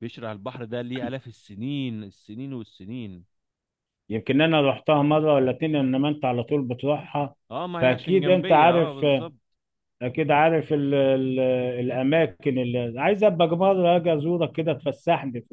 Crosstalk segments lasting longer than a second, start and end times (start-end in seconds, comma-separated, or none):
7.8-9.1